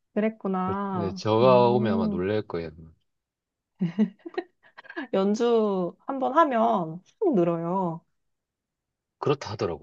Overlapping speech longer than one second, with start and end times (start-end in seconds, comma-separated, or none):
0.9-2.2